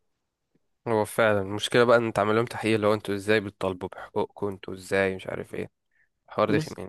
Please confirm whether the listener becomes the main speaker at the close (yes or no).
yes